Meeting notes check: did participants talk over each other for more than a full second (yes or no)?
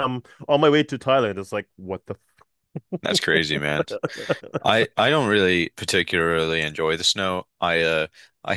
no